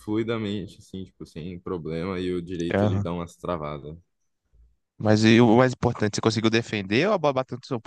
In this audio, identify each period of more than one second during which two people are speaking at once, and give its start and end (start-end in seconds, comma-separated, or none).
none